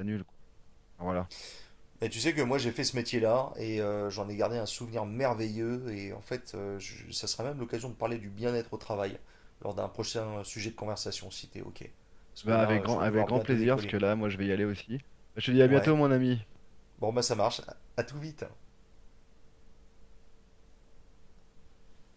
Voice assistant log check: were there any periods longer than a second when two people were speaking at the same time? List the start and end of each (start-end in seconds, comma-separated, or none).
12.4-14.0